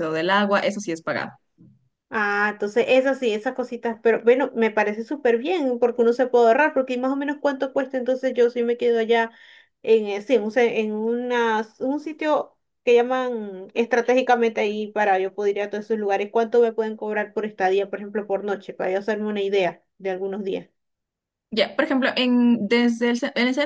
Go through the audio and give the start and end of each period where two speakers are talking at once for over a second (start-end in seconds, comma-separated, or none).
none